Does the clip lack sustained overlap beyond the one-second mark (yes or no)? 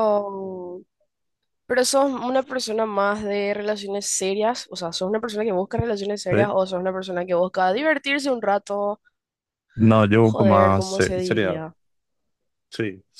no